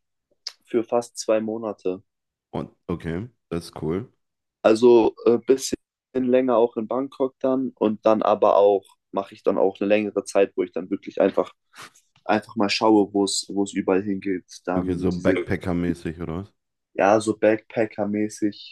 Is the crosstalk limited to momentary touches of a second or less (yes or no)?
yes